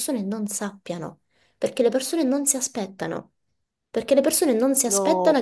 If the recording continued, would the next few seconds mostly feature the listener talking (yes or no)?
no